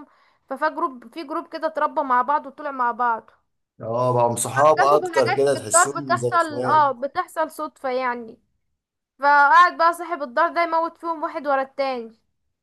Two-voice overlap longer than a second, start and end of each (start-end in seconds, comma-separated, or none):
4.6-6.8